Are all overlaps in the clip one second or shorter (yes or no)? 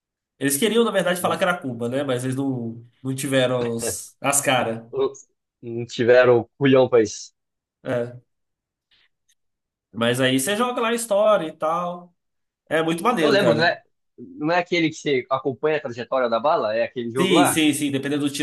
yes